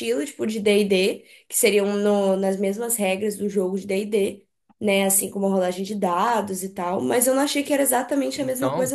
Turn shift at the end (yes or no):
yes